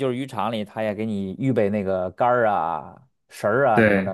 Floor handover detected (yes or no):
no